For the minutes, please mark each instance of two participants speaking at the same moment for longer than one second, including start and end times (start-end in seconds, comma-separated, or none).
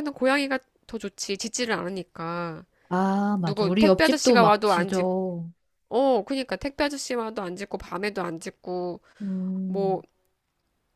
3.4-5.1